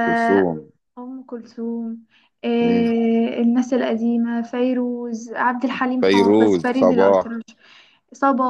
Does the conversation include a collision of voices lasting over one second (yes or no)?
yes